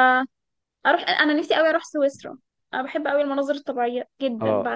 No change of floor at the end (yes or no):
no